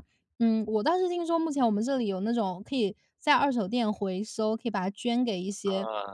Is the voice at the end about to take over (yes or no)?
no